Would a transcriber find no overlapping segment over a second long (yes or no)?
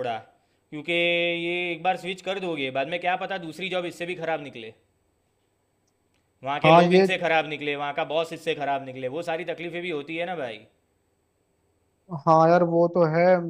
yes